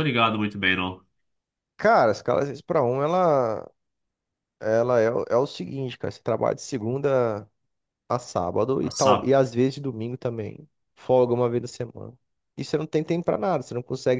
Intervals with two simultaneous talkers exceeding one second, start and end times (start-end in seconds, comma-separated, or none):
none